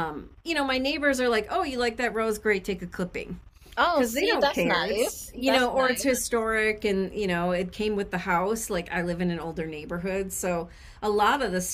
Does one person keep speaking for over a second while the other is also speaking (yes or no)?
yes